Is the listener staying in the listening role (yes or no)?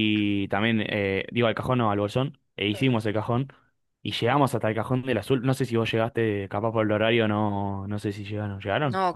no